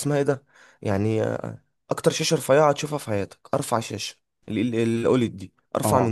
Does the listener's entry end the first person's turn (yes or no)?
yes